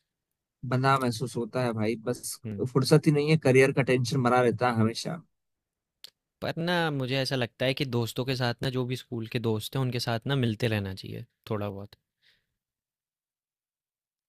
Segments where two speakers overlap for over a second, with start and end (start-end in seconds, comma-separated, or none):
none